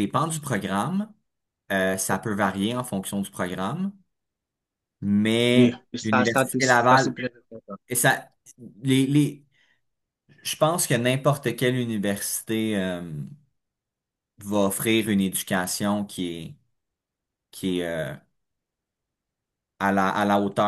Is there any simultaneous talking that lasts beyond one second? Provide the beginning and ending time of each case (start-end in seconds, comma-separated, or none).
5.5-7.2